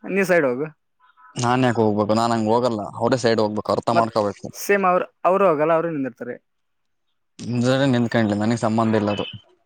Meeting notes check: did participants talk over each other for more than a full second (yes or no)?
no